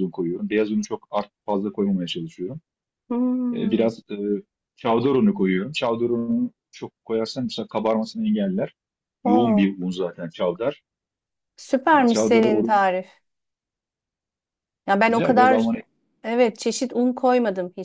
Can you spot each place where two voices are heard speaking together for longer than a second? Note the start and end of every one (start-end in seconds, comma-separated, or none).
none